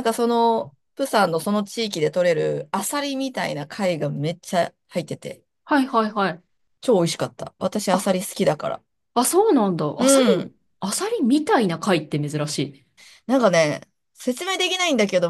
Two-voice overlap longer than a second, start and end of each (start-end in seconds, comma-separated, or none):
none